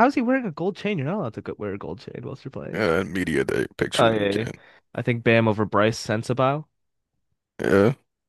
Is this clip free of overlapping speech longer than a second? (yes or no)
yes